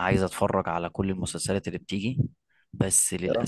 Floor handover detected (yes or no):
no